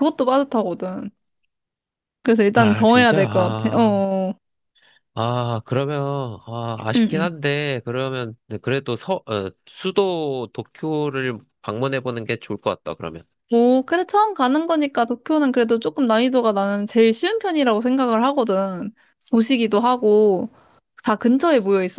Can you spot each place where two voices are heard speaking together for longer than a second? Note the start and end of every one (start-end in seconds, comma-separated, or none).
2.5-3.9